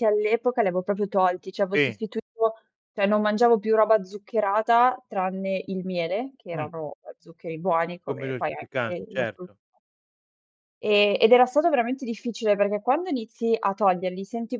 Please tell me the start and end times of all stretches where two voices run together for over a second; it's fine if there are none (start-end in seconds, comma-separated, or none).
8.1-9.6